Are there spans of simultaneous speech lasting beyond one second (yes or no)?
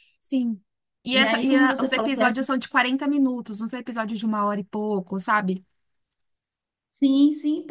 yes